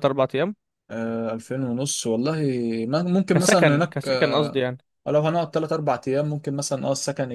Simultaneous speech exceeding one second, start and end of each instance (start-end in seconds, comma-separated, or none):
3.3-4.6